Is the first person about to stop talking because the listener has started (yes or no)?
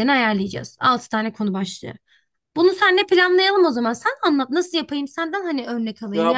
no